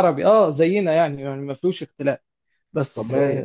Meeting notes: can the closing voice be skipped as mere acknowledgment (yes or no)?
yes